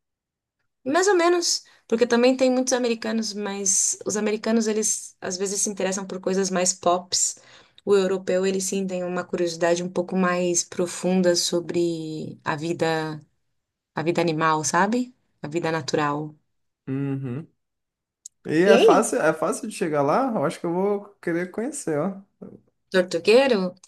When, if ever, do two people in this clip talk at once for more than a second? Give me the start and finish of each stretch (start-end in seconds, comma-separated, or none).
none